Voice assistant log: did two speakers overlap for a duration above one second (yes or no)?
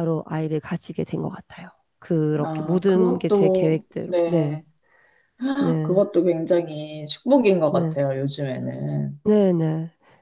yes